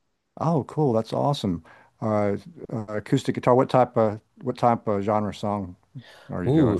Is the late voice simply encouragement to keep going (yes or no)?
no